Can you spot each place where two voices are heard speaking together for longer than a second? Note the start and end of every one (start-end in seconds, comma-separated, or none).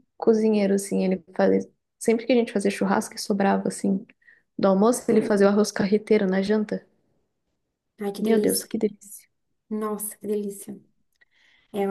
none